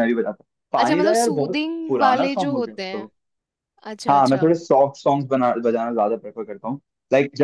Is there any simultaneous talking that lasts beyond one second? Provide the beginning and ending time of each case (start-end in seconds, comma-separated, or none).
0.8-3.1